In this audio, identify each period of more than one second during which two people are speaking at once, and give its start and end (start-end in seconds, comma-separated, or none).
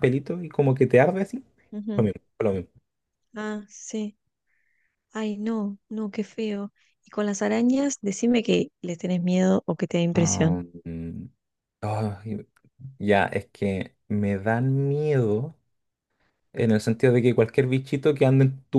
none